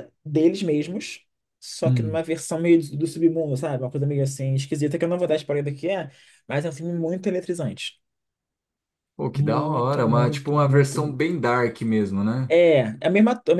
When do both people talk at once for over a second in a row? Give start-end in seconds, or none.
9.3-11.0